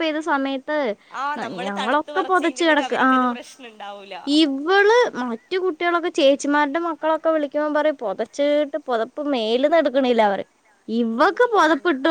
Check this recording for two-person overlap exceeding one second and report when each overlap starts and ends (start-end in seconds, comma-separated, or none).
1.4-3.3